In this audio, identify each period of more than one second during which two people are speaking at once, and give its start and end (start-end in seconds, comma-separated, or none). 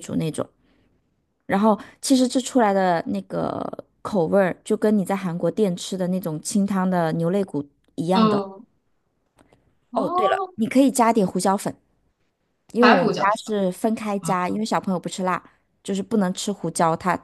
none